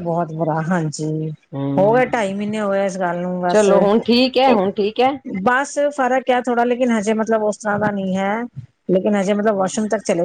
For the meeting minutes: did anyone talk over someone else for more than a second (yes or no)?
no